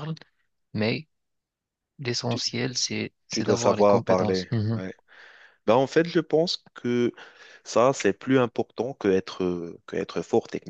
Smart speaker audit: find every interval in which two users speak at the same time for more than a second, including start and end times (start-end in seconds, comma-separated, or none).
3.3-4.8